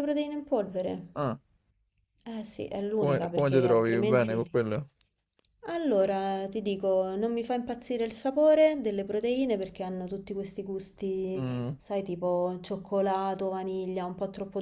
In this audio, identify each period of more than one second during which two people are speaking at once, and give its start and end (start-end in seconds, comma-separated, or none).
3.0-4.5